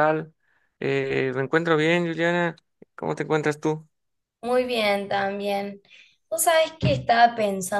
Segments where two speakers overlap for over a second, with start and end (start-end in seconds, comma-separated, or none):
none